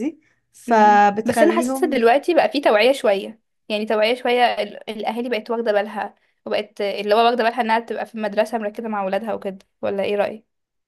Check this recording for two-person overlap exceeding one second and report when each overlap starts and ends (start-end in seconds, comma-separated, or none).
0.7-2.0